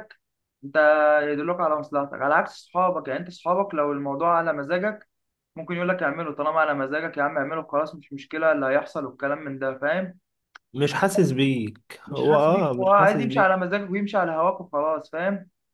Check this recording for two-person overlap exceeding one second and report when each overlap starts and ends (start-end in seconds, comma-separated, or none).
12.1-13.6